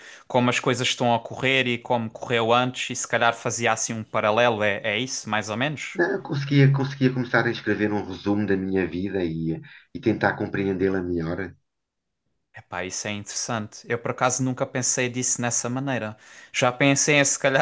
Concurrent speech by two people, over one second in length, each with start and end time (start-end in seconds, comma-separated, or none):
none